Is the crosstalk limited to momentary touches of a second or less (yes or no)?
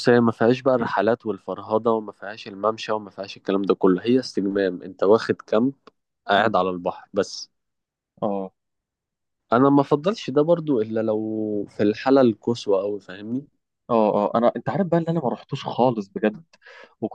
yes